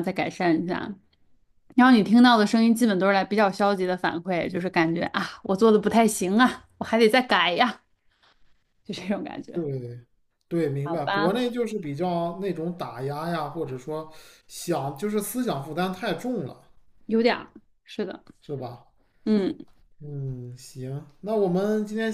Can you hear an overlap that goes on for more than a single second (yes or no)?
no